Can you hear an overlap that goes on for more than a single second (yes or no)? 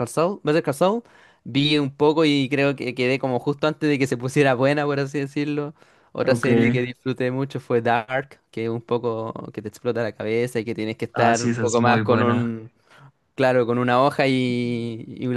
yes